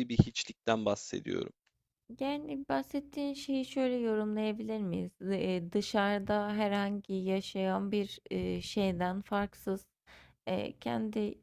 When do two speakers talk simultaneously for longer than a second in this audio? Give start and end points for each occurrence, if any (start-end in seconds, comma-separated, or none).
none